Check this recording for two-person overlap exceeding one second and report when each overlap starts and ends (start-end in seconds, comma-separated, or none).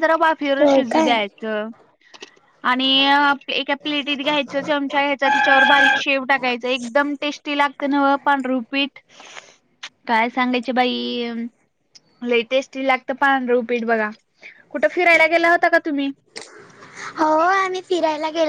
none